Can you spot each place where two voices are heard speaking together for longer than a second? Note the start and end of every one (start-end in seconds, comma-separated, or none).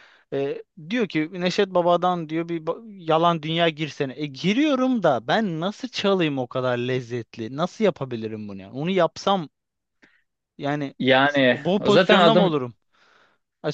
11.0-12.6